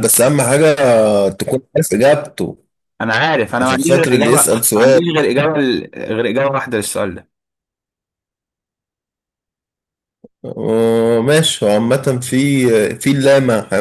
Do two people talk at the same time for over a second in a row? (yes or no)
yes